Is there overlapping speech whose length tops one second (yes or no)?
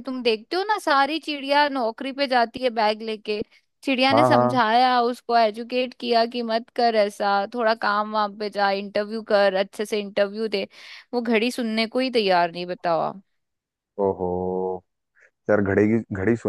no